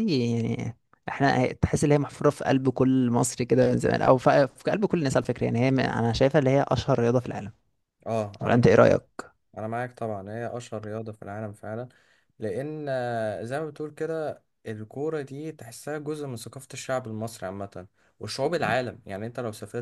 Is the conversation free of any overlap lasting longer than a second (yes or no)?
yes